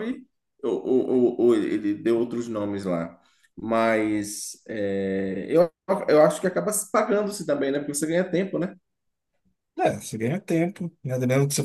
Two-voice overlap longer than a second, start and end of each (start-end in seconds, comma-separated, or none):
none